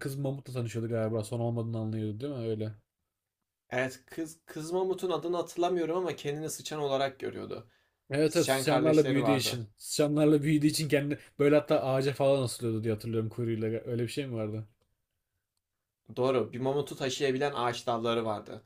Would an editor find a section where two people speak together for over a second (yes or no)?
yes